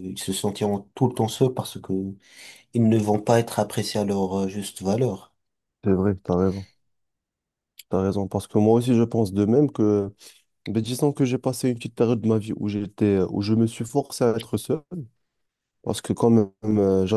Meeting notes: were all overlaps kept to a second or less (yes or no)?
yes